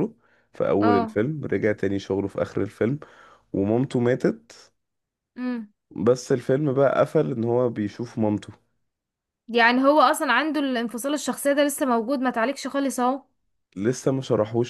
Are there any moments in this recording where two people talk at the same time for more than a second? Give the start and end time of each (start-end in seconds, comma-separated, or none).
none